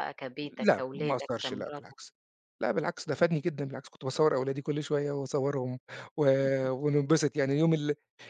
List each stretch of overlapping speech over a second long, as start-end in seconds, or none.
0.5-2.0